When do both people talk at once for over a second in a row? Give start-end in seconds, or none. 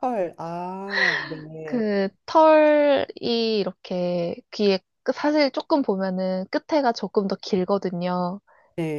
none